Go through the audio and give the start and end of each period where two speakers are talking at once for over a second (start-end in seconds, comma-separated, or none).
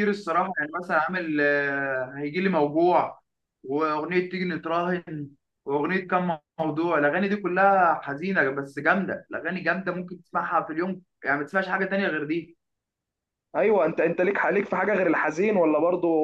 none